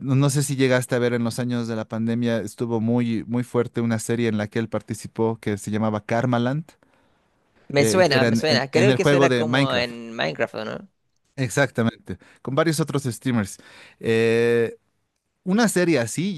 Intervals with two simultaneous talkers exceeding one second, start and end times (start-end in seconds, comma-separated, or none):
7.8-9.9